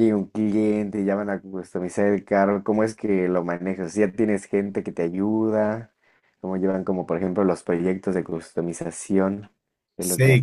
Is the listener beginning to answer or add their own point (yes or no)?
yes